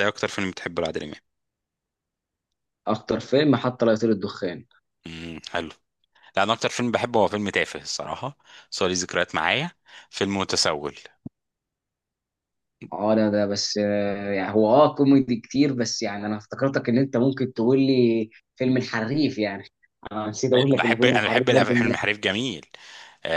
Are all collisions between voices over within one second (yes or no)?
no